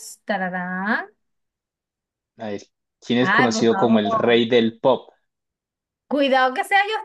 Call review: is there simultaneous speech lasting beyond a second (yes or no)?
yes